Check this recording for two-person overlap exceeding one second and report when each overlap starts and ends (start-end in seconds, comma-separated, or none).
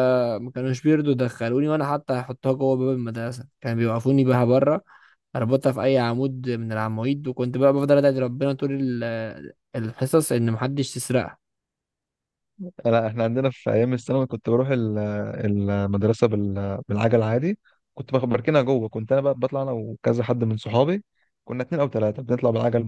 none